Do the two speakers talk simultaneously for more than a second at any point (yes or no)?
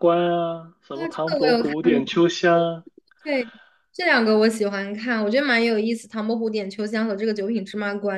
yes